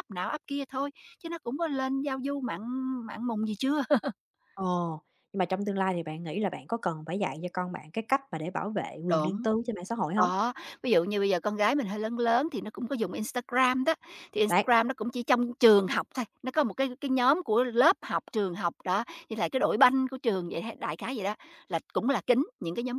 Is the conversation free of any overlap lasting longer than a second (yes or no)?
yes